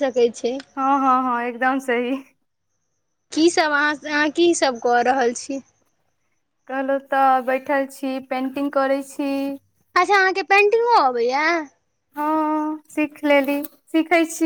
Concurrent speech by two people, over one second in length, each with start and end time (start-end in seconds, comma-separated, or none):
none